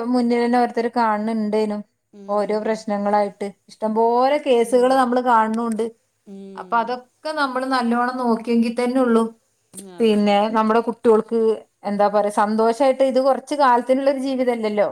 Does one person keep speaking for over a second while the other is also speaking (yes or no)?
no